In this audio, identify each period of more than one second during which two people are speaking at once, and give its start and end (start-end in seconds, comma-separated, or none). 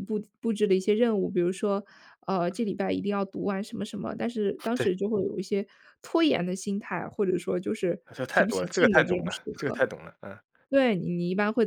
8.1-9.8